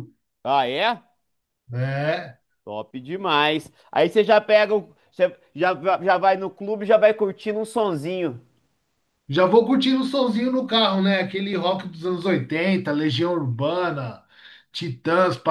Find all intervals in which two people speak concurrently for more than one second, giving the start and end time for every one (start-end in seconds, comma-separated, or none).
none